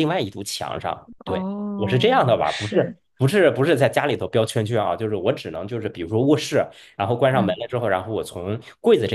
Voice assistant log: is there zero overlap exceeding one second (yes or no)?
no